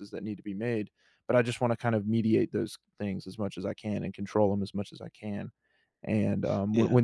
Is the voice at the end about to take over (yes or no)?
no